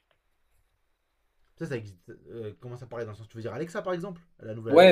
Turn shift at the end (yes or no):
yes